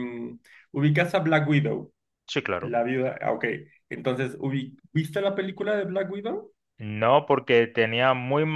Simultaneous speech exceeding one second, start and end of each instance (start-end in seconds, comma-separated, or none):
none